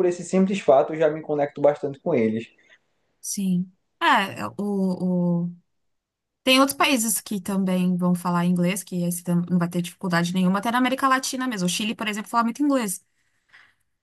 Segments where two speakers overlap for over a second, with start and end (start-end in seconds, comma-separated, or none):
none